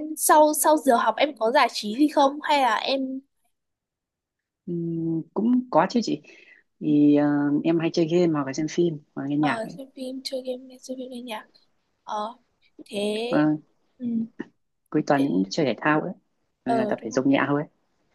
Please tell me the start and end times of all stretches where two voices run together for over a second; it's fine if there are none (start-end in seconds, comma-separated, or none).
none